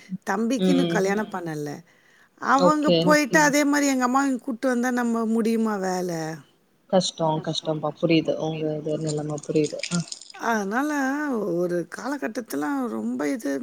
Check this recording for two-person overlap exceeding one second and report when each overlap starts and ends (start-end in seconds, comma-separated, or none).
none